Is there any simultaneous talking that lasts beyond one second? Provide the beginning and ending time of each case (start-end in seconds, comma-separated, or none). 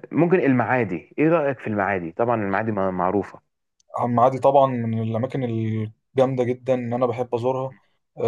none